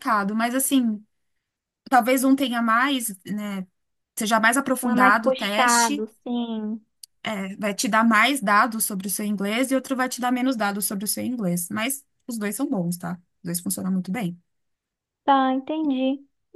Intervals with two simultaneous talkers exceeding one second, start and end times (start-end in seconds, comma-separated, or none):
4.8-6.0